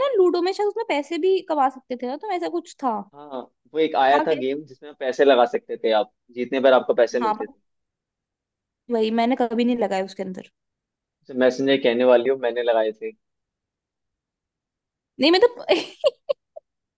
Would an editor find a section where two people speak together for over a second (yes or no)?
no